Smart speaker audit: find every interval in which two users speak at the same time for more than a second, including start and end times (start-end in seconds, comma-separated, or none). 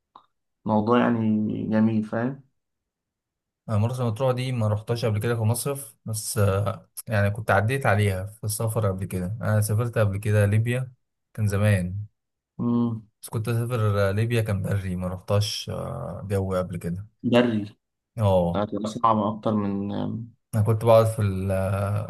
none